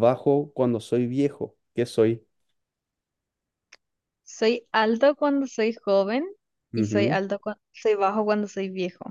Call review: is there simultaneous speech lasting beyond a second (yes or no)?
no